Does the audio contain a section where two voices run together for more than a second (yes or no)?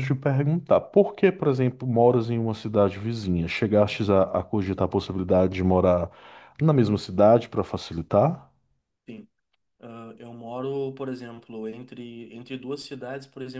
no